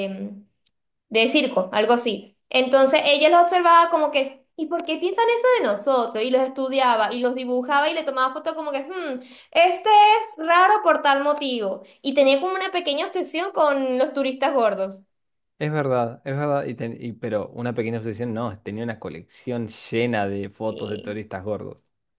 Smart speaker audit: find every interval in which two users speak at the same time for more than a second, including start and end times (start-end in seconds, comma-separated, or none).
none